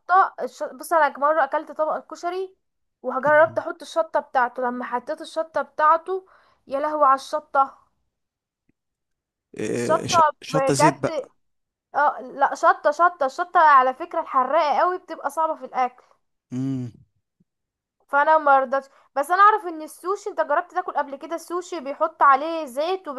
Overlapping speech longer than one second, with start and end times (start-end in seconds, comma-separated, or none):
9.7-11.3